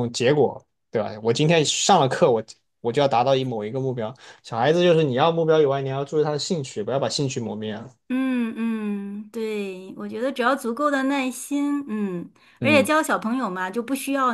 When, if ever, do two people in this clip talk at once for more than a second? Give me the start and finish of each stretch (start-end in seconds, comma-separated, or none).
none